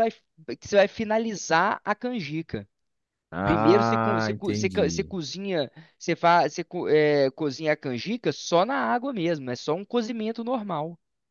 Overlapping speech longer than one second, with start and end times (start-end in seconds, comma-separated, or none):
3.4-5.1